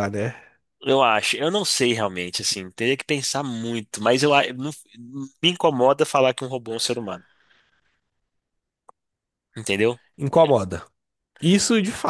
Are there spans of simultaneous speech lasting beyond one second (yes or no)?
no